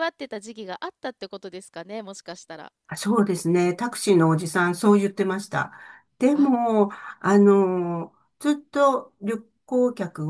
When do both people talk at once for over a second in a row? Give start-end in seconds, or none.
none